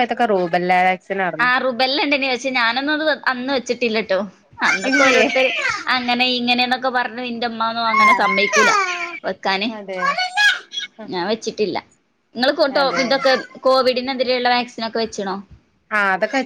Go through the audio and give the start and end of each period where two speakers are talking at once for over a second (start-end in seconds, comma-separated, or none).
none